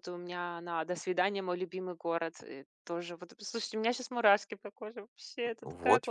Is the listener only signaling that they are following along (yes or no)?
no